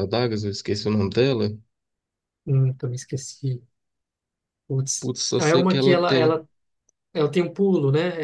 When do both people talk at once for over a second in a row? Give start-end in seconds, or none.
5.0-6.4